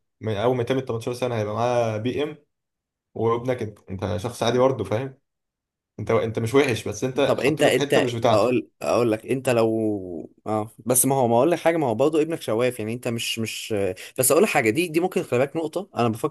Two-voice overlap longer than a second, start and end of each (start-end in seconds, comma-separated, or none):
7.2-8.6